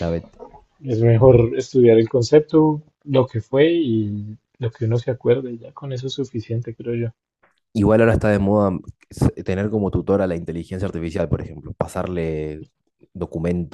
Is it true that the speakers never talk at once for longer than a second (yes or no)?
yes